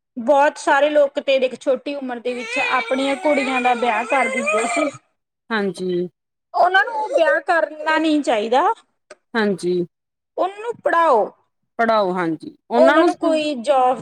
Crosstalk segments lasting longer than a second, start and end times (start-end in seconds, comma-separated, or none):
none